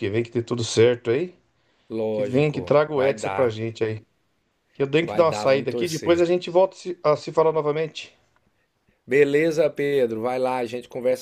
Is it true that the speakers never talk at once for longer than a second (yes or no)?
no